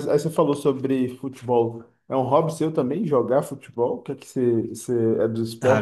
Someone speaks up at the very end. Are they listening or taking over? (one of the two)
taking over